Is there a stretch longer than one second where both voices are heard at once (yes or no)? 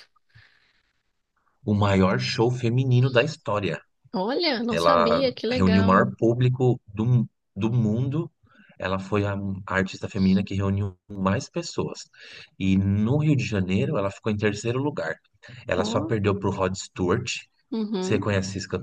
yes